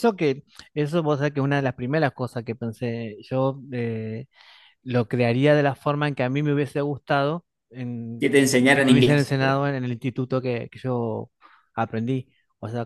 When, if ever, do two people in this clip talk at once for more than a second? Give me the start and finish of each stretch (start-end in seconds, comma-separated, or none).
8.2-9.7